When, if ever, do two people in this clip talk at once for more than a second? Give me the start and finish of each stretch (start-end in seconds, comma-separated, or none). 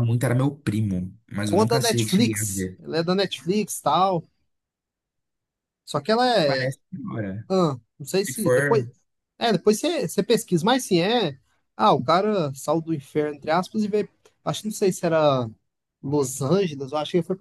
1.5-2.8